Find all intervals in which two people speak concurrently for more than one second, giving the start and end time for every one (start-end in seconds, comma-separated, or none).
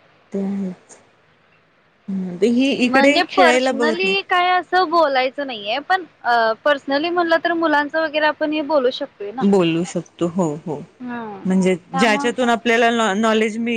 2.8-4.2